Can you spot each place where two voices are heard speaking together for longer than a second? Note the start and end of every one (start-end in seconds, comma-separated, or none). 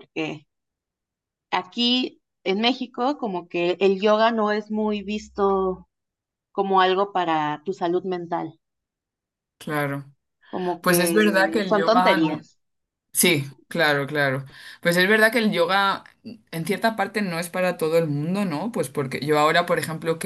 10.8-12.5